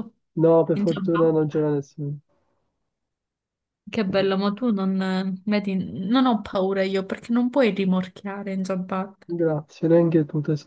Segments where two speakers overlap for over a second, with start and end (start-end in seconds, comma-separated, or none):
none